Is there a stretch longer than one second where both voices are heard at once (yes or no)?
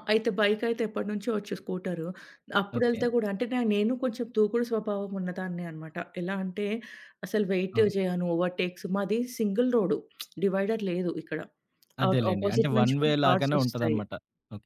yes